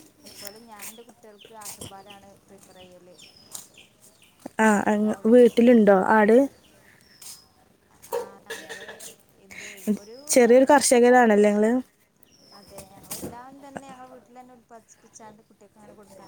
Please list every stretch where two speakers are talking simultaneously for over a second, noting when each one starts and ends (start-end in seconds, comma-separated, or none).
10.3-11.7